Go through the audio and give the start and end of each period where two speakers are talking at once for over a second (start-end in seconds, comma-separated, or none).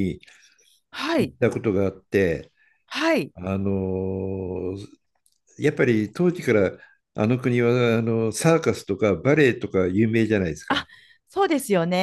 none